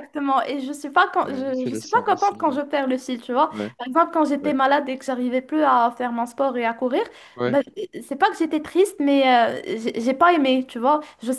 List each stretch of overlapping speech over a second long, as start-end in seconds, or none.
1.2-2.6